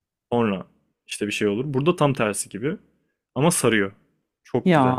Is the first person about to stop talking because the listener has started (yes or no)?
yes